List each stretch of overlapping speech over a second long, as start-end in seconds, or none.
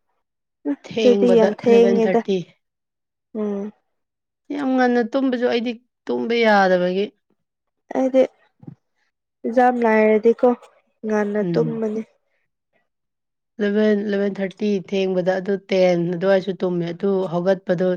0.9-2.2